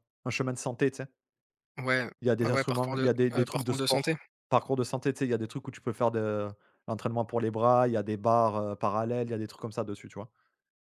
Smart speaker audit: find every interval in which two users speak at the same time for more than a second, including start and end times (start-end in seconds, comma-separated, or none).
2.4-4.1